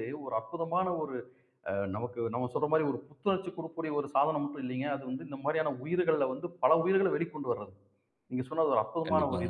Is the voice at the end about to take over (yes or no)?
no